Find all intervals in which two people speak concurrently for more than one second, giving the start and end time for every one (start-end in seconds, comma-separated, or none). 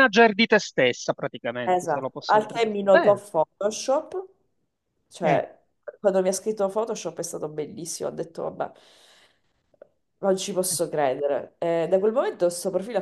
1.6-3.2